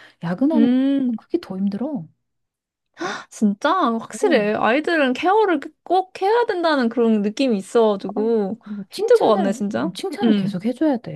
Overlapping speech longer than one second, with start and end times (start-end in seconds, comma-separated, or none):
8.2-10.6